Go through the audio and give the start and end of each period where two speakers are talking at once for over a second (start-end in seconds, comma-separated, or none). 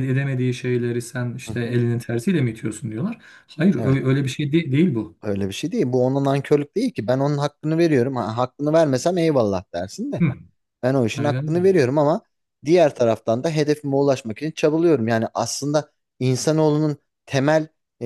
none